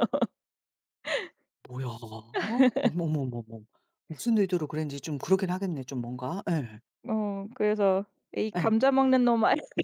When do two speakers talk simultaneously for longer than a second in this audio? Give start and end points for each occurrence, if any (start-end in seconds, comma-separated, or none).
none